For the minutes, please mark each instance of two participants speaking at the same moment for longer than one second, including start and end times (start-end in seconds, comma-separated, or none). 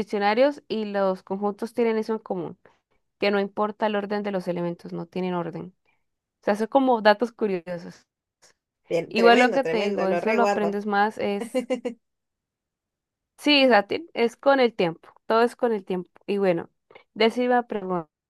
9.2-10.8